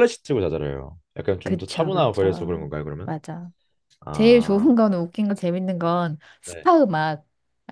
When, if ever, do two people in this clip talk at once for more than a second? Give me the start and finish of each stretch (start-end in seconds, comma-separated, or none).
1.4-3.1